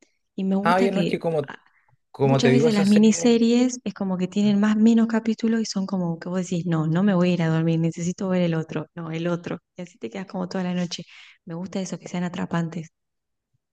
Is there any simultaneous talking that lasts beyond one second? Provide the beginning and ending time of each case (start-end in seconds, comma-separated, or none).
2.2-3.5